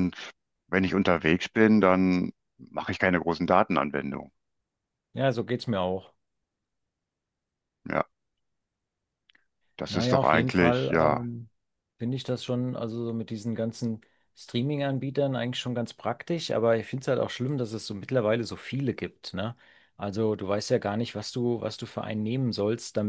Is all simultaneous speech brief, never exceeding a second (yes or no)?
no